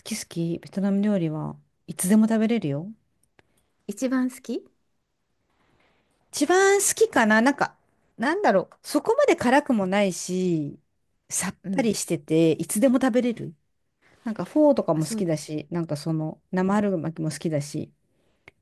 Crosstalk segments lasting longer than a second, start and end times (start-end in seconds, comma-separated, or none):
none